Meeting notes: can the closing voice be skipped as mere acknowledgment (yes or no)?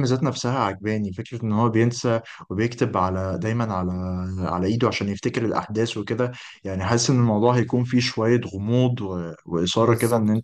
yes